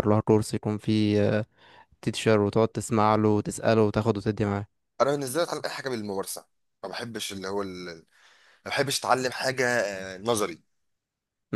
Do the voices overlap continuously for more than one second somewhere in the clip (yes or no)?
no